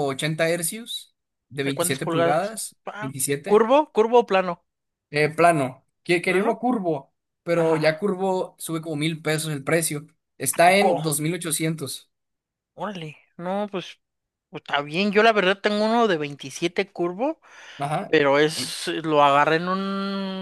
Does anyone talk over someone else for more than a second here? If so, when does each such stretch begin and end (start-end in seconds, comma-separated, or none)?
1.6-3.7